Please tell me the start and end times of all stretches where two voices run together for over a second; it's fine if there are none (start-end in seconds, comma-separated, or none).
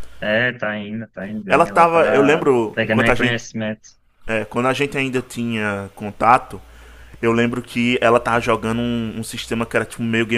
1.5-3.4